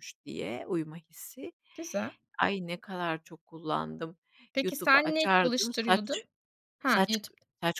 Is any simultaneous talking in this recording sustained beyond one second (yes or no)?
yes